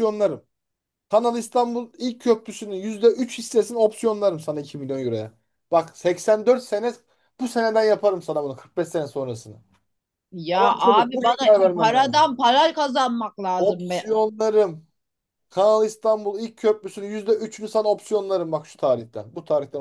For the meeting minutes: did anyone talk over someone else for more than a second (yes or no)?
yes